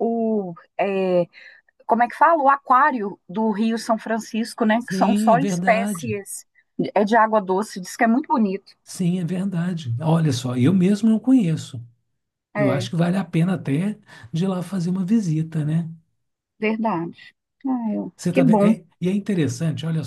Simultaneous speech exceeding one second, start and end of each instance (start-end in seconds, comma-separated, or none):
4.8-6.1